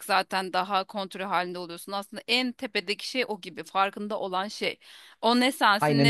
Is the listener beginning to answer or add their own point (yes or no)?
no